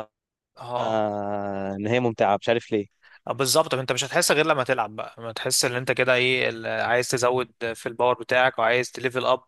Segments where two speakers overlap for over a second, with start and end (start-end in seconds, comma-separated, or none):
none